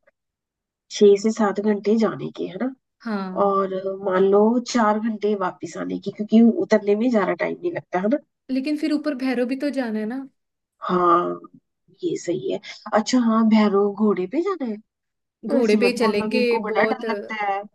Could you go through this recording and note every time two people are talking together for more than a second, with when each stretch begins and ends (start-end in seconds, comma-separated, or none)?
15.5-17.0